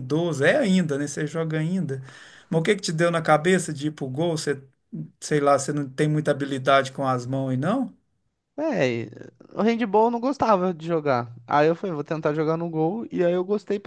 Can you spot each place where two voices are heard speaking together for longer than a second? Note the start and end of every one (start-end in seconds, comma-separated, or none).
none